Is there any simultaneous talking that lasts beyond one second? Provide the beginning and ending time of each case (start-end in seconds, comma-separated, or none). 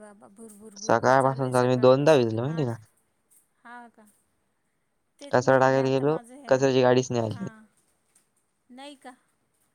0.8-2.7, 5.2-6.6